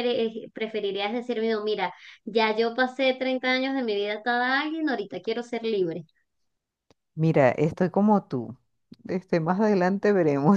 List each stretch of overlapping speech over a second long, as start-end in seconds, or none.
none